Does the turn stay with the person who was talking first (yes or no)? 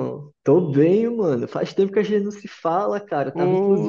yes